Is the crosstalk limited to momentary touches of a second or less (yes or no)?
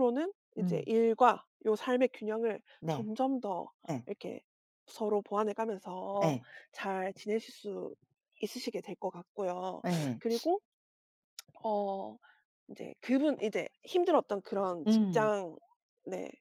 yes